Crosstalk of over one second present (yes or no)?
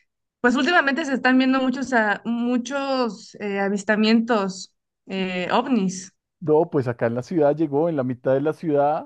no